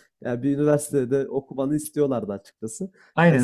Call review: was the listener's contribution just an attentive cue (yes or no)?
yes